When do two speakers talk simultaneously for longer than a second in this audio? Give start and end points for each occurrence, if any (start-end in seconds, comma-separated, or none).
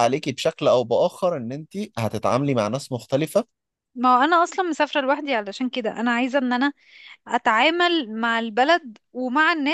none